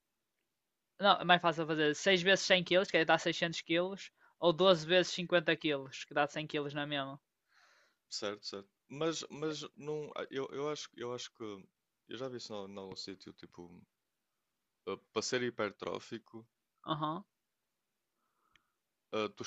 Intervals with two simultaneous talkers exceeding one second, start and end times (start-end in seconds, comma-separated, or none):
none